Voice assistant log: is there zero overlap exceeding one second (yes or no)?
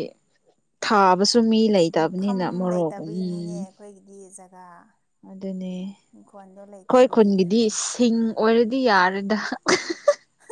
no